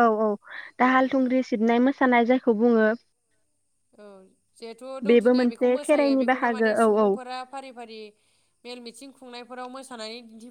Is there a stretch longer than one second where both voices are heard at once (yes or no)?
yes